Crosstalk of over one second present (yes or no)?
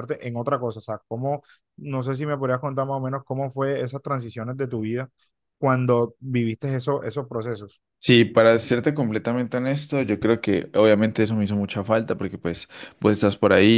no